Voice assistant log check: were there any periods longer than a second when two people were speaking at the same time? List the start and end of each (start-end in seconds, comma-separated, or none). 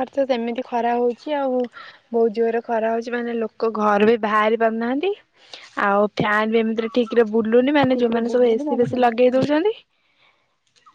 7.9-9.5